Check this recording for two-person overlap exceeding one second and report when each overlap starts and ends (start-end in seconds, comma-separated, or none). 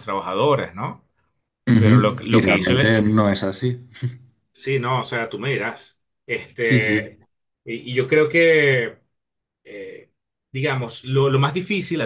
1.8-3.0